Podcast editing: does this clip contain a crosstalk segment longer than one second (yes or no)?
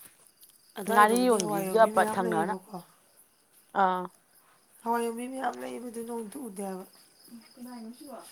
yes